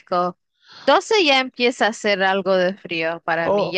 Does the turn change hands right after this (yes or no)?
yes